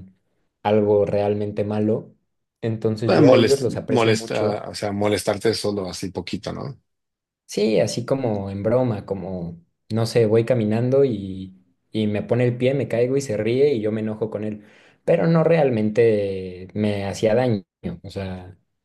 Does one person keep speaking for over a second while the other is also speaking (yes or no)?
yes